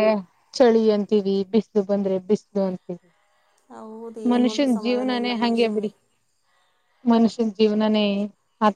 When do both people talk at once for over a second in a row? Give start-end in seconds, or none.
4.3-5.9